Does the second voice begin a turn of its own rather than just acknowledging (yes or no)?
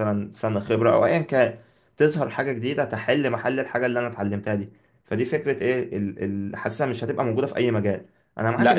yes